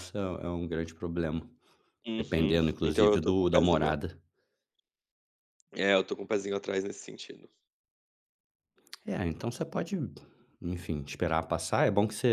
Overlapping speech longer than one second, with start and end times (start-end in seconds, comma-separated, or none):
2.2-4.0